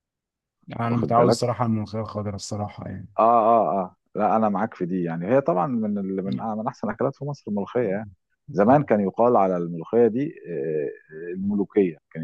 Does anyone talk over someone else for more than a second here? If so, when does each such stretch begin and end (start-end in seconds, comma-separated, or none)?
none